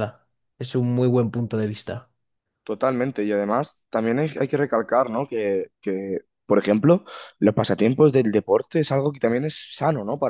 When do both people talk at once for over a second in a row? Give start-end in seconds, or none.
none